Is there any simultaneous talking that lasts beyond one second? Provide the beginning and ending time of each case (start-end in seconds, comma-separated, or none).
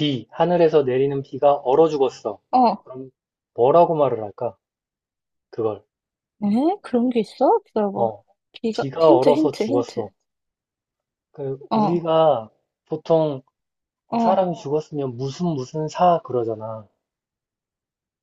8.7-10.0